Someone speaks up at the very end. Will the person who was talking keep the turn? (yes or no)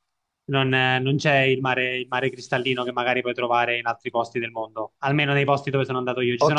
no